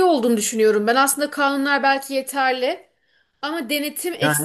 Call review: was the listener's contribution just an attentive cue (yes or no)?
yes